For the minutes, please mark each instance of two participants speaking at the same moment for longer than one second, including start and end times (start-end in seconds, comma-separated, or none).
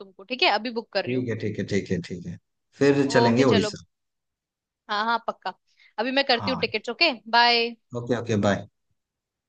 none